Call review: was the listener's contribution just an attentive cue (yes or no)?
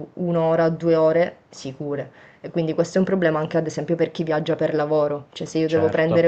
yes